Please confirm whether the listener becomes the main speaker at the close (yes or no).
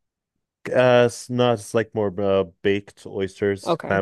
yes